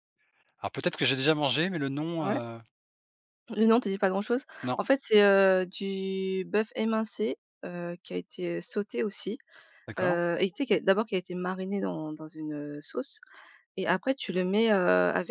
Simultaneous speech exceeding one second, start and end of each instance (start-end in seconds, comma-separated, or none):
none